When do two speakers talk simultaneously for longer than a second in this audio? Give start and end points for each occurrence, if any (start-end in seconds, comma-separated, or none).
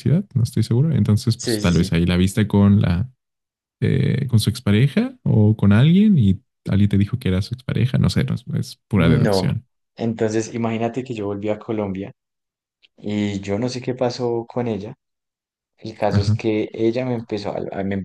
none